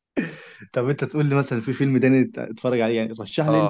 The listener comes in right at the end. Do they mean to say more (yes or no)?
yes